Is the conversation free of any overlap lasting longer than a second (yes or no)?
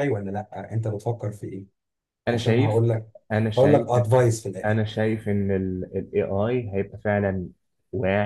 yes